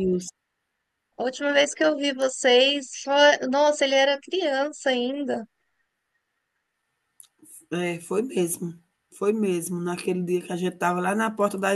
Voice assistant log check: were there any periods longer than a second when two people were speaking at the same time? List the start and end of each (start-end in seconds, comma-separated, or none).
none